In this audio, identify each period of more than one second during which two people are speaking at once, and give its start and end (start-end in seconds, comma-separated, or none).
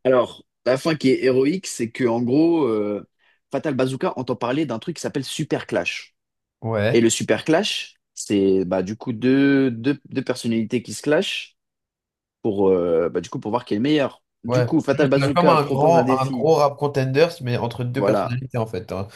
14.5-16.5